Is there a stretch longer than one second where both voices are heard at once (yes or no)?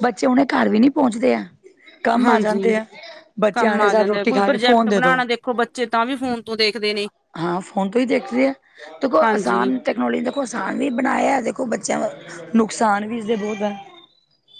yes